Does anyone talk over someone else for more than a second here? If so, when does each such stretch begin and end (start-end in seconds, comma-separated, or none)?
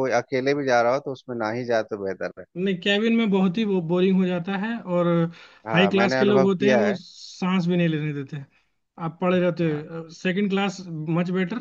5.7-7.0